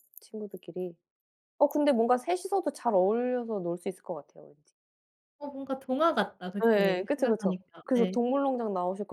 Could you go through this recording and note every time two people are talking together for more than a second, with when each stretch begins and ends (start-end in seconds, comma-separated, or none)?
6.7-8.2